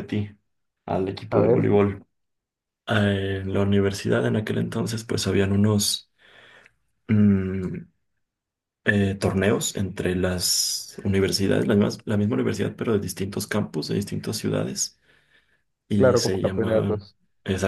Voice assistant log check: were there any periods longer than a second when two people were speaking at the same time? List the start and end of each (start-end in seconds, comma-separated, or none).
15.9-17.1